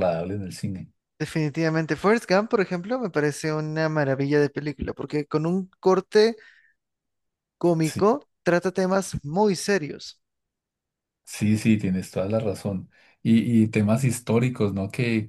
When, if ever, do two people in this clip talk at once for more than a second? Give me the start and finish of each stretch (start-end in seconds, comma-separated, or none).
none